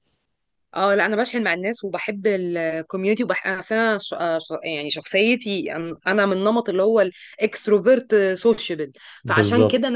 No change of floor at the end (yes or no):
yes